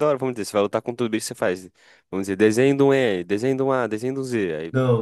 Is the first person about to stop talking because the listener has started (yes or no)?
yes